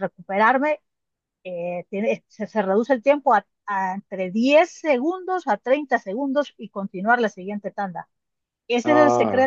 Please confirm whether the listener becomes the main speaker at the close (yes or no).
no